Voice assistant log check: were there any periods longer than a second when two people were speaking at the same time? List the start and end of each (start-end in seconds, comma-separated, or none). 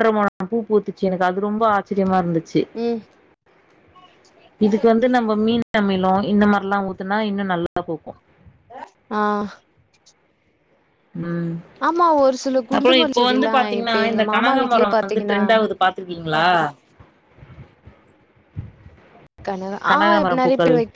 12.8-15.4